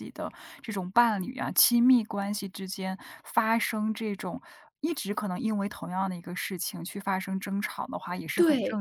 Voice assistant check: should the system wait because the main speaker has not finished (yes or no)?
yes